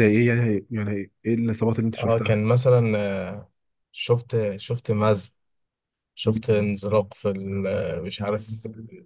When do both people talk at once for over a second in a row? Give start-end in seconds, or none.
none